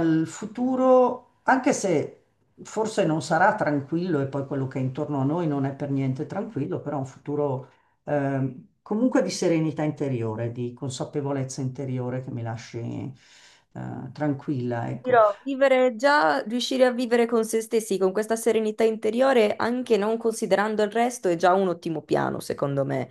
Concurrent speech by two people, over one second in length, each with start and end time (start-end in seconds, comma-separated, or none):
none